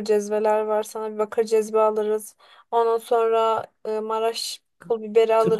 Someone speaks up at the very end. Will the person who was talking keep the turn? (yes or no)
no